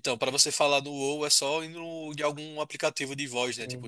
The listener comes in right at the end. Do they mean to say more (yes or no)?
yes